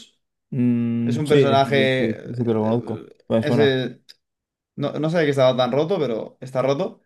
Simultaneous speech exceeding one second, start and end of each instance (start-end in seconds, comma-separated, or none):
1.0-3.8